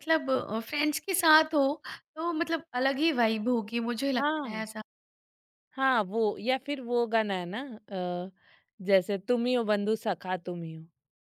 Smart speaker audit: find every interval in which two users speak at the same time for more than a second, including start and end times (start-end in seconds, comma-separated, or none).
none